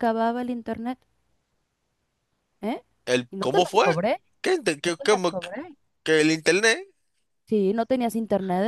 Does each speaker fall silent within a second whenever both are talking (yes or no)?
yes